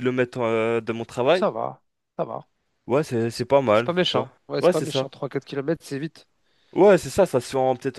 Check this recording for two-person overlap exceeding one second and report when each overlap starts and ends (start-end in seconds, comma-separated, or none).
3.3-5.1